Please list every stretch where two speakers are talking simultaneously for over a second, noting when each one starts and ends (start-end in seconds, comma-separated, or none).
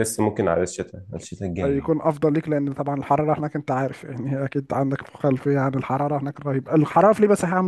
none